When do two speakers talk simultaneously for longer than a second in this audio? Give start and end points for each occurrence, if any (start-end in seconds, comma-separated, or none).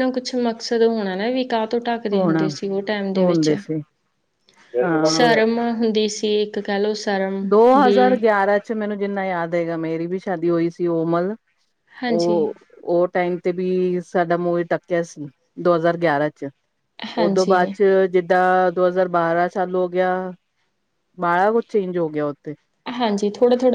none